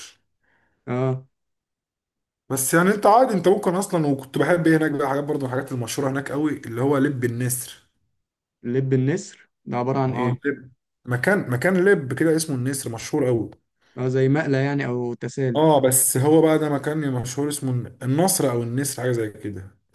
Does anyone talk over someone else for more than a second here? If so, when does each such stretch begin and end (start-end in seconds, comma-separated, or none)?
none